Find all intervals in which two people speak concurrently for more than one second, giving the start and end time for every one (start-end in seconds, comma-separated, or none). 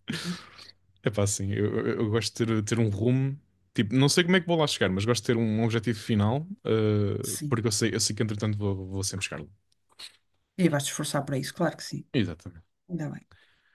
none